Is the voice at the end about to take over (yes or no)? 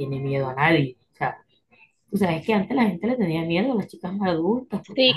yes